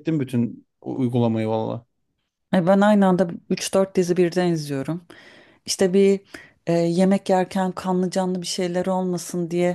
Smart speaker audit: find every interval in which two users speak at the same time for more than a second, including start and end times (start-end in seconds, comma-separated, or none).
none